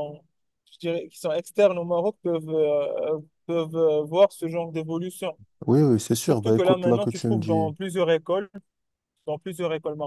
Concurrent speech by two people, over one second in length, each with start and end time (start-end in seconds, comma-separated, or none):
6.2-7.7